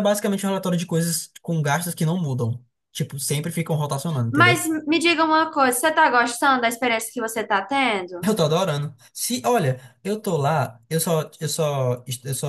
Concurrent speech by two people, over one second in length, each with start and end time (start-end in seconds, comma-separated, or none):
none